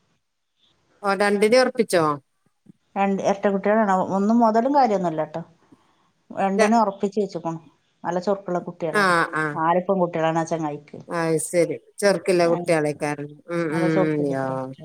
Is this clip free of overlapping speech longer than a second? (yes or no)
yes